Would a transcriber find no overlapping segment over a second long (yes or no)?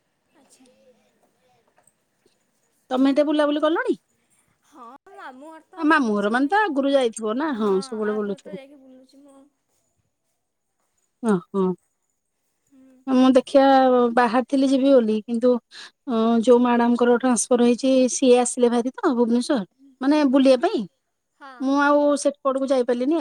no